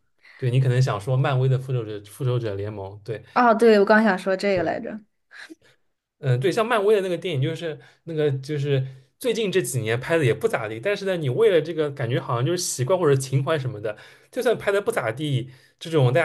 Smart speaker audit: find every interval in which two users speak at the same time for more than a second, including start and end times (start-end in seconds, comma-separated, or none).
none